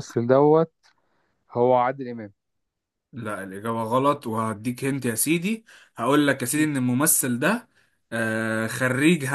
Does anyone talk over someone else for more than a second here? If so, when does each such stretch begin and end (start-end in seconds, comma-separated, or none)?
none